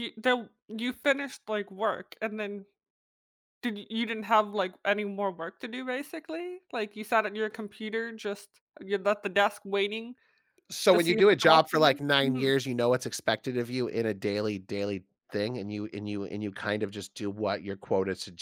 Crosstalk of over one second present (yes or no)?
yes